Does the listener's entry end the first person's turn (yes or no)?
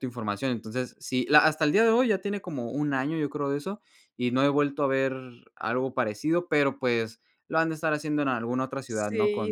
yes